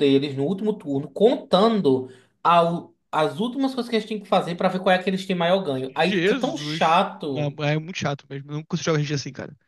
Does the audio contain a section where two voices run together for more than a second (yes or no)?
yes